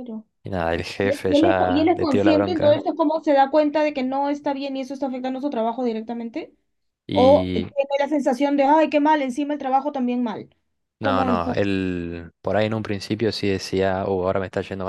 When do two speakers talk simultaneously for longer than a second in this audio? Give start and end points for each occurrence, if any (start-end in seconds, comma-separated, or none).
1.0-2.8